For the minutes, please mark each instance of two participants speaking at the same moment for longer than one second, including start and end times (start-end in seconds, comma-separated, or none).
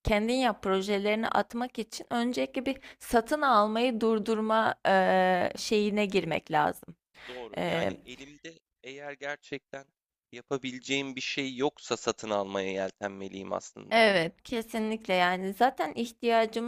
none